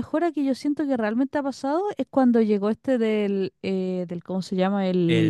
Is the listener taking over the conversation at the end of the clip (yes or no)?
no